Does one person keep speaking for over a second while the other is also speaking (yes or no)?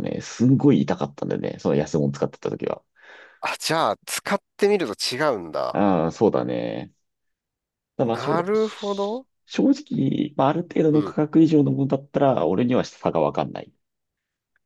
yes